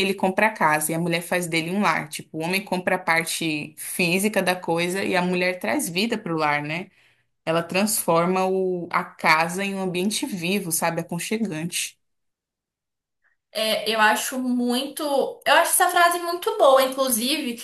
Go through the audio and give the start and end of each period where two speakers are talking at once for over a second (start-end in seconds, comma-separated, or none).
none